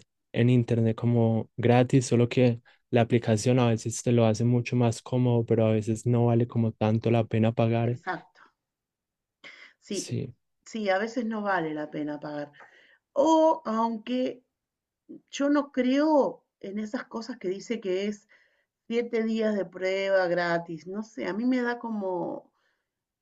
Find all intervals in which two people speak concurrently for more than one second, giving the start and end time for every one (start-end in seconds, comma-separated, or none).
none